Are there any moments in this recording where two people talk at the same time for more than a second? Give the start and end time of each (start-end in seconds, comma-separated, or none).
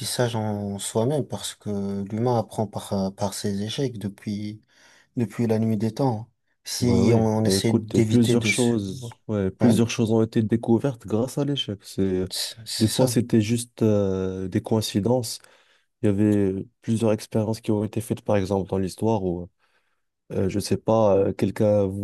6.8-8.8